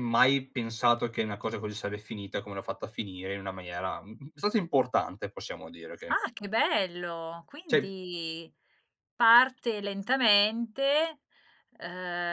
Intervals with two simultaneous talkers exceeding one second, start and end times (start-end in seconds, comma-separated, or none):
none